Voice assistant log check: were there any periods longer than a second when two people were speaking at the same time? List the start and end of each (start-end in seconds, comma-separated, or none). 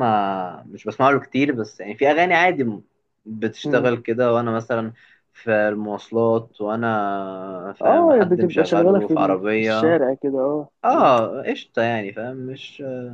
7.8-10.0